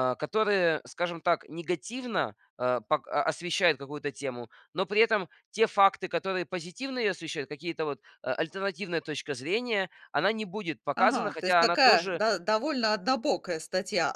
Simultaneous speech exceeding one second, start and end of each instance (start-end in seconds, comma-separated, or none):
11.0-12.2